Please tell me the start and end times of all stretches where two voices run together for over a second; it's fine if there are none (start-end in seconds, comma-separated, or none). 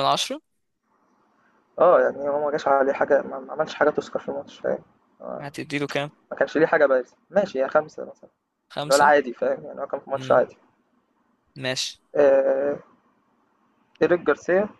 none